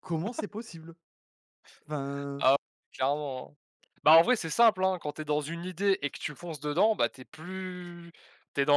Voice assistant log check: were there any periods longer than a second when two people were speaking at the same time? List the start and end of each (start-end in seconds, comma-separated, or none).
none